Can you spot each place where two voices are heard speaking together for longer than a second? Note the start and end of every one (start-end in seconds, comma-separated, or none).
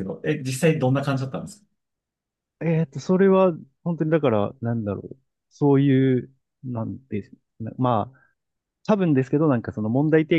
none